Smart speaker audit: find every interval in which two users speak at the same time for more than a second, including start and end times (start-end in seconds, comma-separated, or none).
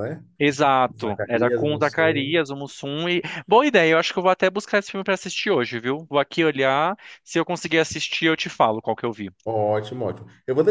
0.9-2.4